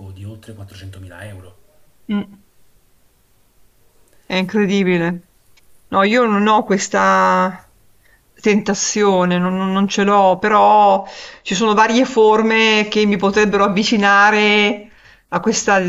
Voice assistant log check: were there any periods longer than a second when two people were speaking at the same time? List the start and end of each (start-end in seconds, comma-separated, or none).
none